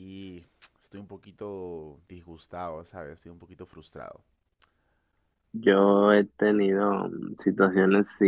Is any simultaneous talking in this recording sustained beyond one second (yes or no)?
no